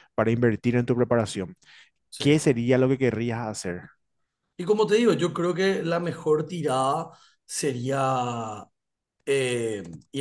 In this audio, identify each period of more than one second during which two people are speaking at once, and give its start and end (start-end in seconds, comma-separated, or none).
none